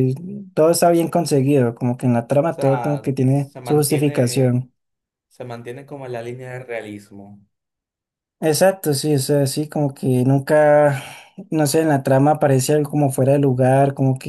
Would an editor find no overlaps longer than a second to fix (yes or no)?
no